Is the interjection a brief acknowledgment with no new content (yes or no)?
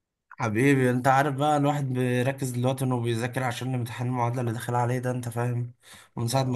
yes